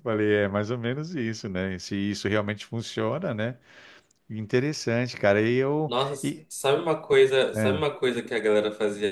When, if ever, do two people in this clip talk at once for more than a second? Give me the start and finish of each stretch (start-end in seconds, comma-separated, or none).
none